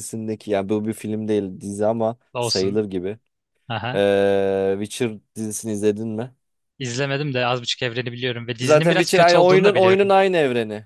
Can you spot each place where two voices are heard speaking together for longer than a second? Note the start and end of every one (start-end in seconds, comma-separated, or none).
8.6-10.2